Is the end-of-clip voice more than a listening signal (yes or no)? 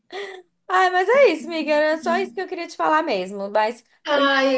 yes